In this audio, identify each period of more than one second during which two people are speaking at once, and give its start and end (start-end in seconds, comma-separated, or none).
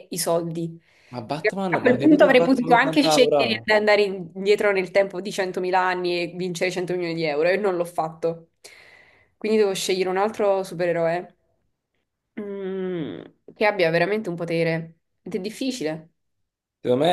1.3-3.4